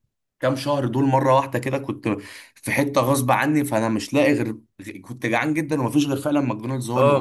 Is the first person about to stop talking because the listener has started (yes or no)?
yes